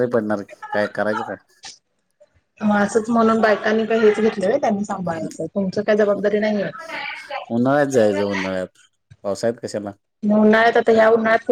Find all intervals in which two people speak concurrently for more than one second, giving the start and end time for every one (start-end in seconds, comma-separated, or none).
none